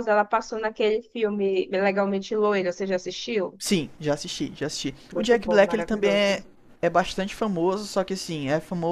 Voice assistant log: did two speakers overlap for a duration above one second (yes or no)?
yes